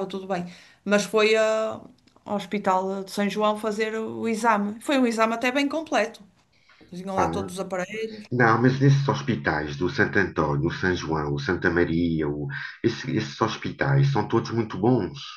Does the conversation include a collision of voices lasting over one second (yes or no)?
no